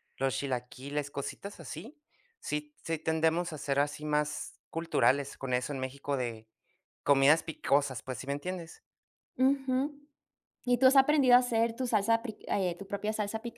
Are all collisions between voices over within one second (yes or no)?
yes